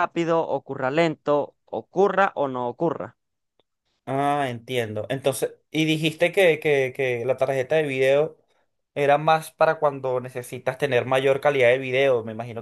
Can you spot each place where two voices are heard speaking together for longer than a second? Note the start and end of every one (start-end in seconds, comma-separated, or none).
none